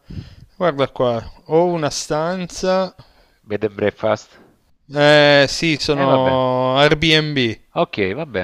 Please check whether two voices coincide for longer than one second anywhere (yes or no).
no